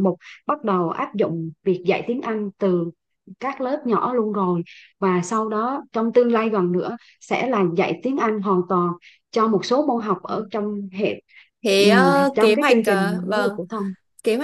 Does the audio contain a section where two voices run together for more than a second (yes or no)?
yes